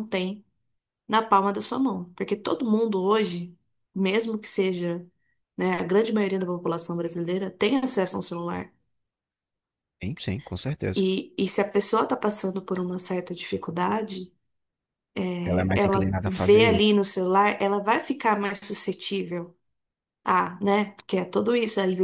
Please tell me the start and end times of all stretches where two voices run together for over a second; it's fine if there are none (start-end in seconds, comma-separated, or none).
15.4-17.0